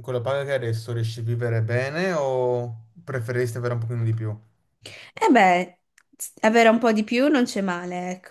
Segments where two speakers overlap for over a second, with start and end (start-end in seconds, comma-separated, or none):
none